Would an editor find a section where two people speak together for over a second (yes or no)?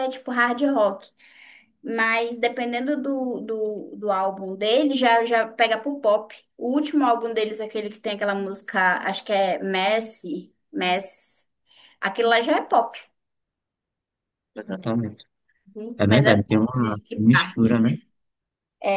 yes